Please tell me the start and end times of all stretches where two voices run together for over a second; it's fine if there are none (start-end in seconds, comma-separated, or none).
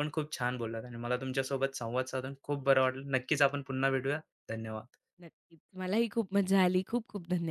none